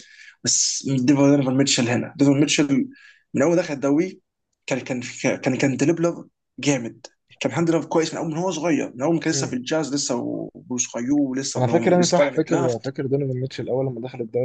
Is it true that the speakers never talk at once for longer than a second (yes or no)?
no